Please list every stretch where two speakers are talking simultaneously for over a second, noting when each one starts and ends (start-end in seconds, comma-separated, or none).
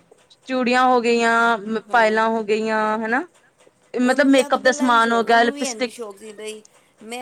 4.0-6.0